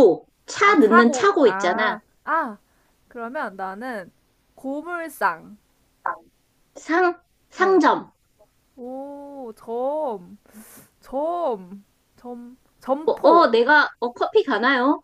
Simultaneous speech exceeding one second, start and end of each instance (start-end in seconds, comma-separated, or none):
0.6-2.0